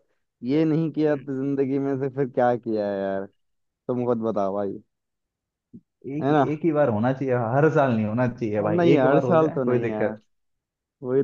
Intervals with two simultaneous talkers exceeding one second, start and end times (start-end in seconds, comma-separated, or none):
8.6-10.2